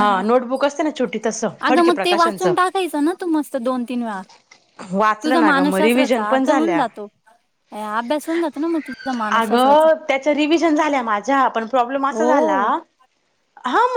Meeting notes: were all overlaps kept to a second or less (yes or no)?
no